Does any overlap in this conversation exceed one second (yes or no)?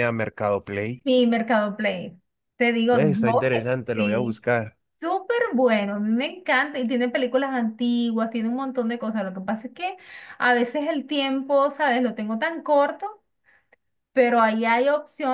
yes